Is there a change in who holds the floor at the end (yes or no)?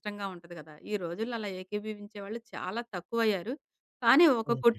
no